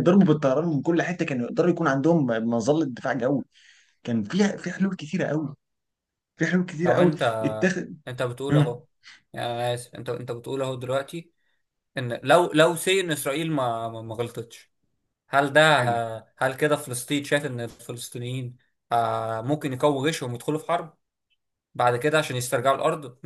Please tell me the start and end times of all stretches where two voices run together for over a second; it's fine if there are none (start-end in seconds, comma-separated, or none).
none